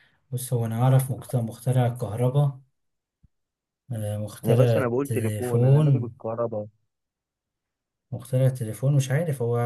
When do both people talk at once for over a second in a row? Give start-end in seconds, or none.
4.5-6.1